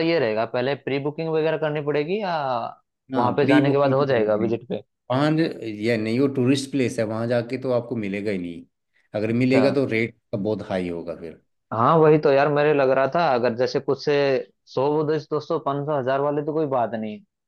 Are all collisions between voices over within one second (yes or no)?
no